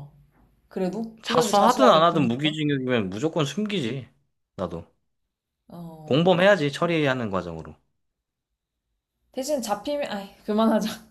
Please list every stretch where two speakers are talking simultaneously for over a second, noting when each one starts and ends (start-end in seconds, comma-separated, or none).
1.2-2.5